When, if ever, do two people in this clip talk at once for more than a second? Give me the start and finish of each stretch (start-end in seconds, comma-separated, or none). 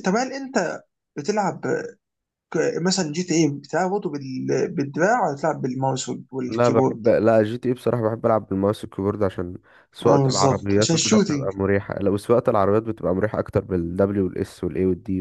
10.1-11.5